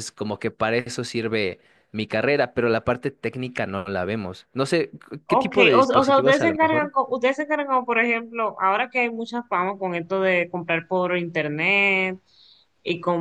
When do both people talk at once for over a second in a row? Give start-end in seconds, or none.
5.3-6.9